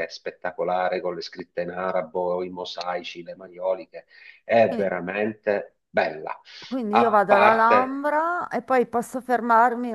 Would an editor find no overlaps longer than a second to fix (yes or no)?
no